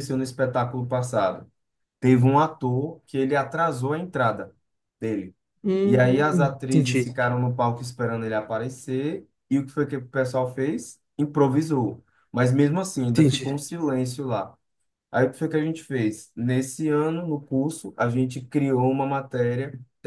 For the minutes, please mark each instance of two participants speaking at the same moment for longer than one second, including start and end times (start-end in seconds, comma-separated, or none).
5.8-7.1